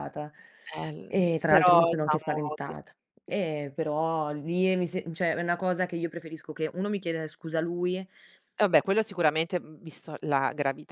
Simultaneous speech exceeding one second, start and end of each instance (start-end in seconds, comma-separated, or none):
1.1-2.7